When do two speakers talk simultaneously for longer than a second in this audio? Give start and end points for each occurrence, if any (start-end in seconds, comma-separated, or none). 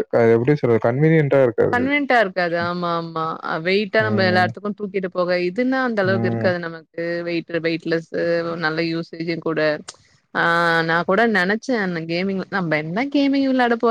none